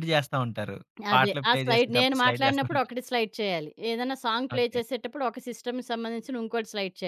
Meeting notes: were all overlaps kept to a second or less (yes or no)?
no